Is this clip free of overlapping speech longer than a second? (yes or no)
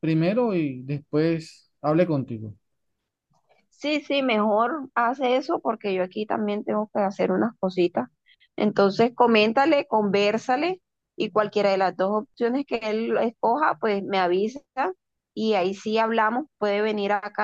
yes